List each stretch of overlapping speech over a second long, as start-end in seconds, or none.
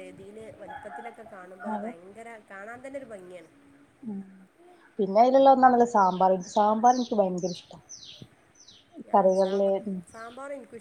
none